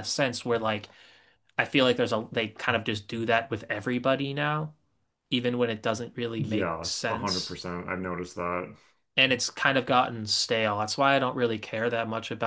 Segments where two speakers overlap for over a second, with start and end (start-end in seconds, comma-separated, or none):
6.4-7.6